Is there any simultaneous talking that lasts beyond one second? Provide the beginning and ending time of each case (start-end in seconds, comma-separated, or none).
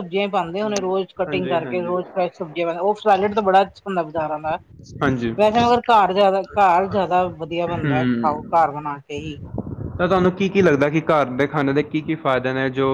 0.6-1.9